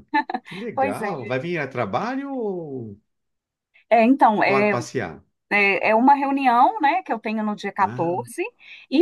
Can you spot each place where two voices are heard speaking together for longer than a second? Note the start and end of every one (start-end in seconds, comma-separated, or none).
none